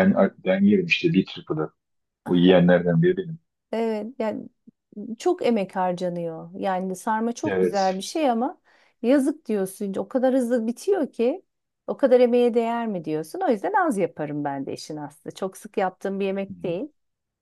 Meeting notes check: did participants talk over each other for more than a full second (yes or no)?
no